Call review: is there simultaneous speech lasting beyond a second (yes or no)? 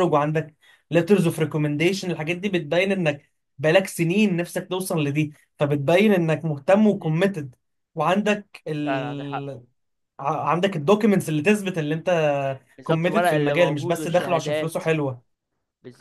yes